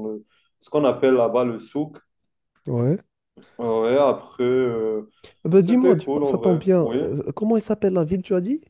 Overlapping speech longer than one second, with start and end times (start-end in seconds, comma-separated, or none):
5.6-7.0